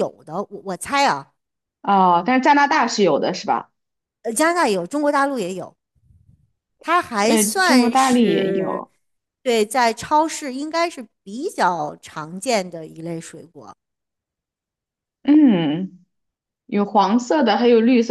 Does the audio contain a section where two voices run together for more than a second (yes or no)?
yes